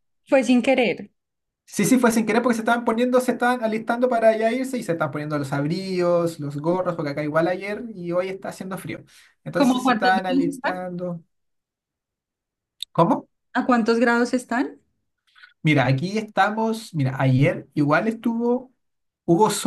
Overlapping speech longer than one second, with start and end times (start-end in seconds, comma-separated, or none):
9.5-10.9